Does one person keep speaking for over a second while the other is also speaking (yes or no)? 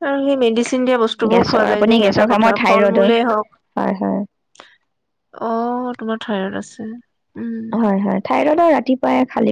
yes